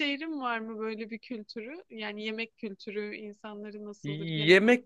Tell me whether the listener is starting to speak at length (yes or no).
yes